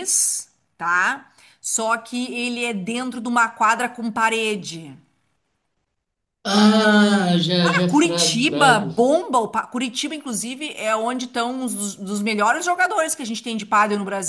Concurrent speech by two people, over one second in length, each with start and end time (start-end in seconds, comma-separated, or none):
7.6-8.9